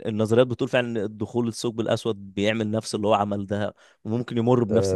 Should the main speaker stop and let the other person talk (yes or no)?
yes